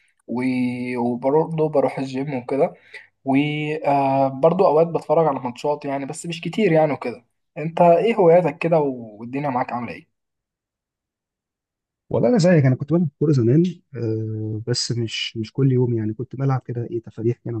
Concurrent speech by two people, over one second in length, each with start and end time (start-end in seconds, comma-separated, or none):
none